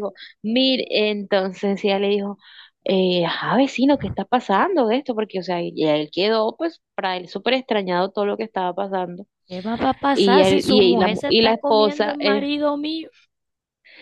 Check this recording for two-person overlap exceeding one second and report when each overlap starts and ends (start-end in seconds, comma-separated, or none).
10.1-12.5